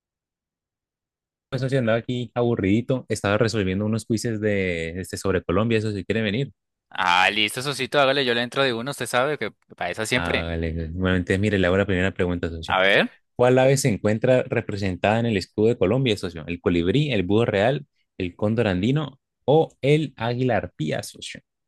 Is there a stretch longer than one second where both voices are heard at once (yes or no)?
no